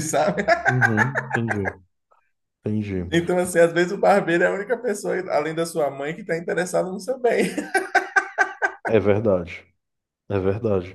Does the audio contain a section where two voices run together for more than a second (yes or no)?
no